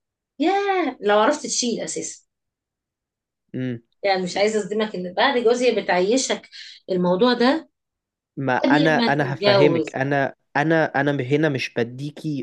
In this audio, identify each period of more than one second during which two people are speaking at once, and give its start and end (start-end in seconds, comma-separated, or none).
8.6-10.0